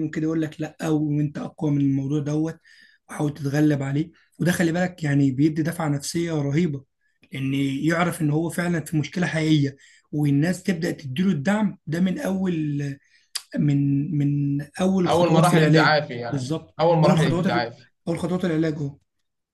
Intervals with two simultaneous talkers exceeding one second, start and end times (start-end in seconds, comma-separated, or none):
15.1-17.5